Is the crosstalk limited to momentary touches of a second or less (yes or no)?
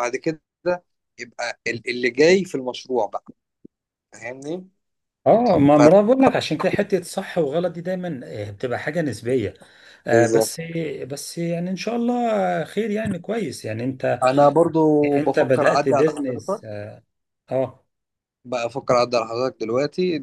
no